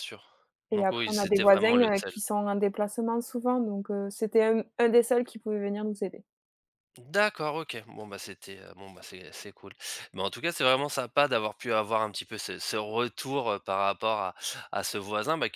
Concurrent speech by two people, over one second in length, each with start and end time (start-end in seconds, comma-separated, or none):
0.7-2.1